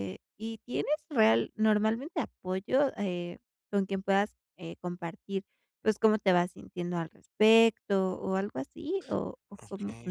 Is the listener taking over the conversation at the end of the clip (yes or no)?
yes